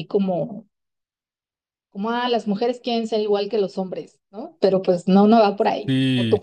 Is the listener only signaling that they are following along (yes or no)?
no